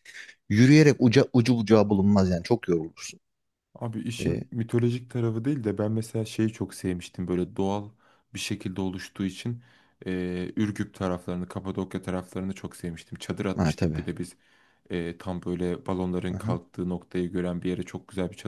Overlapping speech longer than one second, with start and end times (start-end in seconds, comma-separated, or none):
none